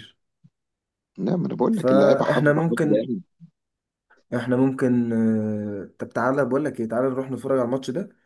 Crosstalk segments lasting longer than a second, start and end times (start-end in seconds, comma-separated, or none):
1.7-3.0